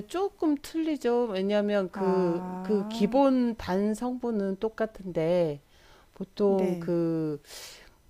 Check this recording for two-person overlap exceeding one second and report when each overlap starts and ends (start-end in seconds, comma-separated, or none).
1.9-3.2